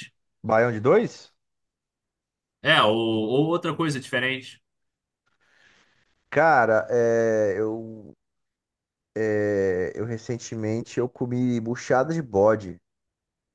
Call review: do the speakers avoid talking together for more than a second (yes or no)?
yes